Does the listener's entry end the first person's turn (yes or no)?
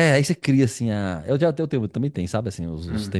no